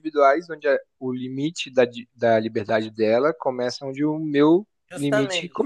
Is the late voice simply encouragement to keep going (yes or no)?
no